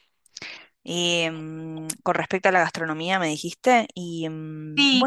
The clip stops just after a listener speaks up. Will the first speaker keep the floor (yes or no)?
no